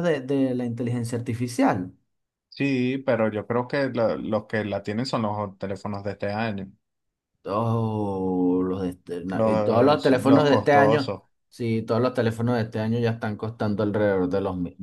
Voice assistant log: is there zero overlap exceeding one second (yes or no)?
no